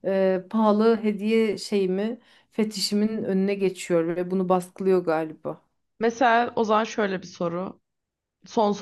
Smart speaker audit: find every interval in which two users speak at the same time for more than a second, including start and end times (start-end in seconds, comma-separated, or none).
none